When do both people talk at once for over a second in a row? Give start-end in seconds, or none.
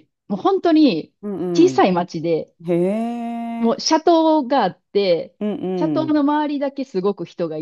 none